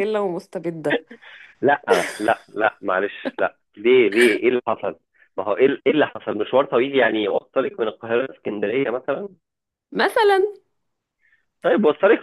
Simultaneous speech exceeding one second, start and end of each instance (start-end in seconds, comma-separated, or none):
none